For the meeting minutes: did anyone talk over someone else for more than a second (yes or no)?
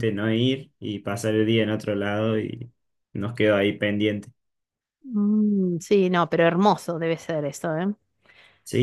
no